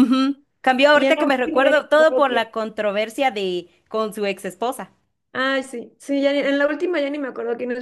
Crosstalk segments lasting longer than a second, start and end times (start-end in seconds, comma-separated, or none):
0.9-2.2